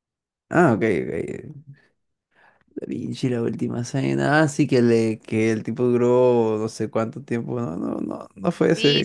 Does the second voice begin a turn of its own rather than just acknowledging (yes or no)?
yes